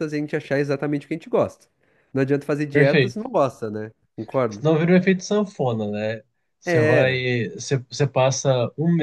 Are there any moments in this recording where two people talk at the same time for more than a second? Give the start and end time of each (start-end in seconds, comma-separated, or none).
none